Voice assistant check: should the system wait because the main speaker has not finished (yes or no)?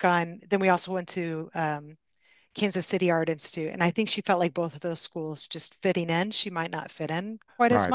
no